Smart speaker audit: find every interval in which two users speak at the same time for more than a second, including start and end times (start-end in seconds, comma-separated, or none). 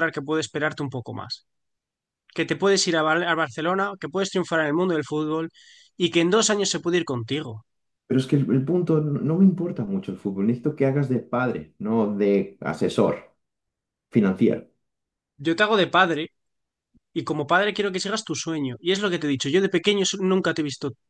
none